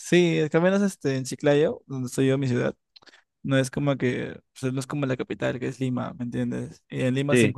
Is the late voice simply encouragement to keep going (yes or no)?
yes